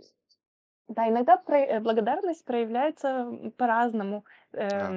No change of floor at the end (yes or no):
yes